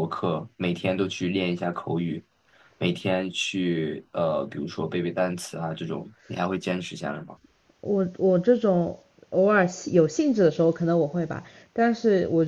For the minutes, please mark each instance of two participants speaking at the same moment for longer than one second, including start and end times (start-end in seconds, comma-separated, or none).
none